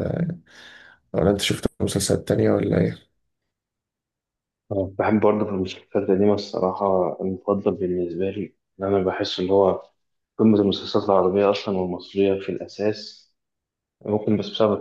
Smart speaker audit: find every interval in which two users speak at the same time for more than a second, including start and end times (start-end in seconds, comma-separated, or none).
none